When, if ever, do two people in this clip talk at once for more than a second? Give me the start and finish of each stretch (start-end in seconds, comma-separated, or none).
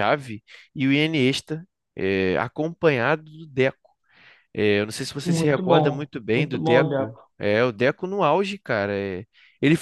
5.2-7.3